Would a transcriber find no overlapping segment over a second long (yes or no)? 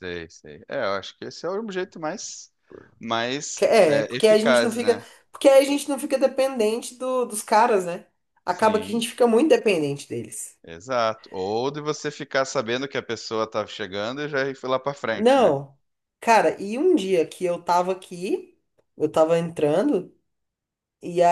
no